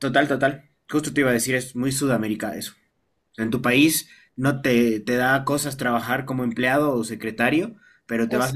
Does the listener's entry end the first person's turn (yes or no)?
no